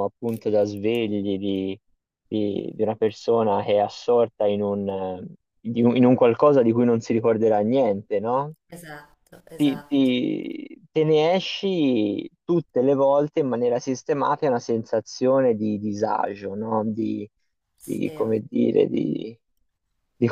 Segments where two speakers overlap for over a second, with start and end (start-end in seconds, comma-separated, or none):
none